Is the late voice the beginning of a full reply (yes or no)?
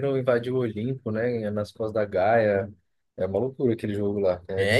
yes